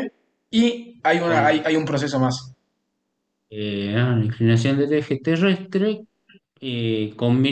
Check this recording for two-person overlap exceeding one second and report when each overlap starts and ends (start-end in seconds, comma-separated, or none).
none